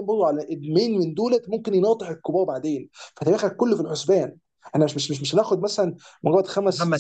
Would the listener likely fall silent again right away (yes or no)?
yes